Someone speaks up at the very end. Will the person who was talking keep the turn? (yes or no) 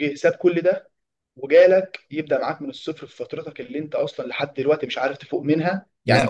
yes